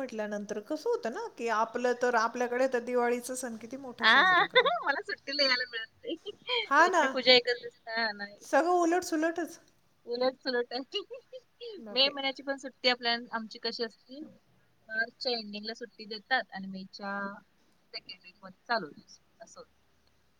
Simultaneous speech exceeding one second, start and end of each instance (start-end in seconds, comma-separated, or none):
none